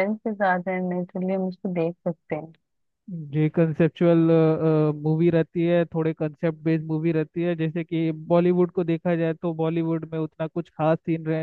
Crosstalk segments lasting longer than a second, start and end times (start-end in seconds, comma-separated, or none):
none